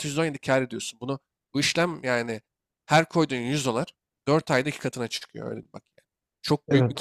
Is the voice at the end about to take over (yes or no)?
yes